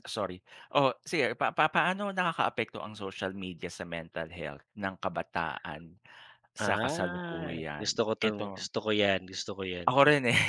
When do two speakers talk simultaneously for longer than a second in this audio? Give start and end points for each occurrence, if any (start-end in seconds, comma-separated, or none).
6.6-8.7